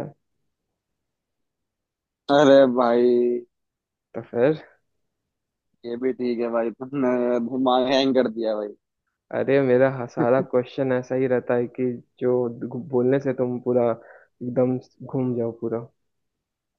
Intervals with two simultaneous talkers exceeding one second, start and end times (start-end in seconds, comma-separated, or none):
none